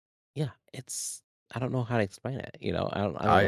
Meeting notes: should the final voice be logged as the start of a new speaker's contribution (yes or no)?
yes